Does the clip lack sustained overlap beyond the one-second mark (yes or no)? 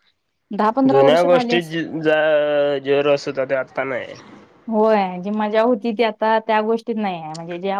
yes